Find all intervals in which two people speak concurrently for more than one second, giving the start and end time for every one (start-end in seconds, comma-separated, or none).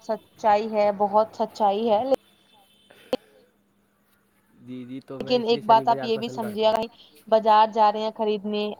5.2-6.7